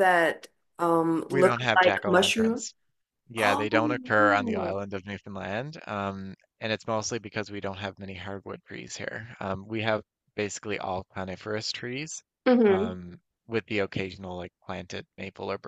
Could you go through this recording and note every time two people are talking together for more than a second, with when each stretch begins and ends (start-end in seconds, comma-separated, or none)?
1.3-2.6, 3.4-4.8